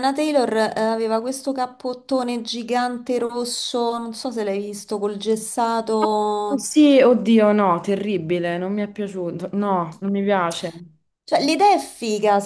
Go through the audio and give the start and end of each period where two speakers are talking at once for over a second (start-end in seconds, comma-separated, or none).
none